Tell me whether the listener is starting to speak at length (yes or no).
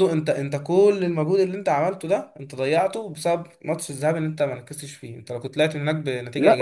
yes